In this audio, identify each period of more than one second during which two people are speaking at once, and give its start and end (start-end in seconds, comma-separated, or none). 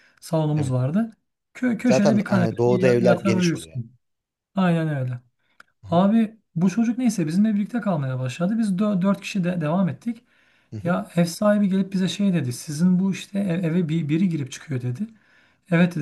1.8-3.8